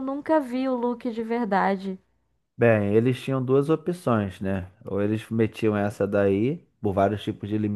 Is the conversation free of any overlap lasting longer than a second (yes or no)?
yes